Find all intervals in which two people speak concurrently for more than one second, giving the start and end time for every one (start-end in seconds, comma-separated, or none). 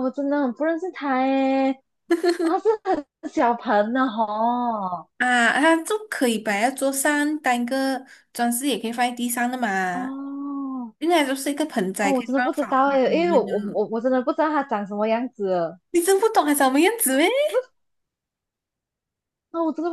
12.0-13.5